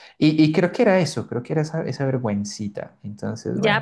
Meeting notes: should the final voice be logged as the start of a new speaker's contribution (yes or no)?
yes